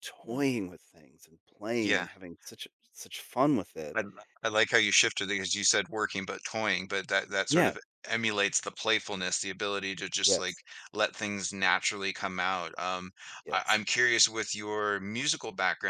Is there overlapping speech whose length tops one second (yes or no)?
no